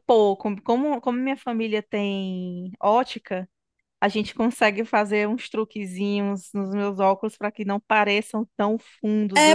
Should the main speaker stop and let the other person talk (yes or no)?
yes